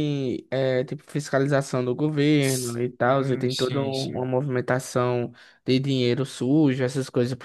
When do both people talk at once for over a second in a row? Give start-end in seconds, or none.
2.4-4.2